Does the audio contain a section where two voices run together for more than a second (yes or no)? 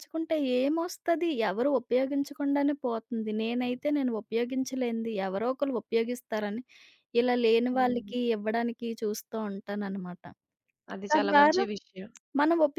no